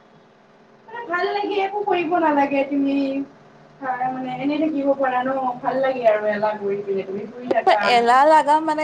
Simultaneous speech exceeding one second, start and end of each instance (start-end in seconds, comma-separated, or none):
none